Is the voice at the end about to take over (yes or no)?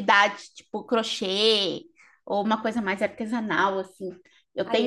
no